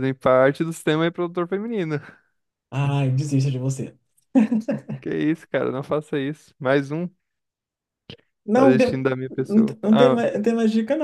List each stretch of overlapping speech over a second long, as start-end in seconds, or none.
8.5-10.2